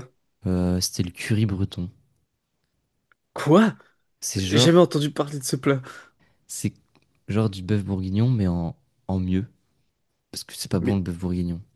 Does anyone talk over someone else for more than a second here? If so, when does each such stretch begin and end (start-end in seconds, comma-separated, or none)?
none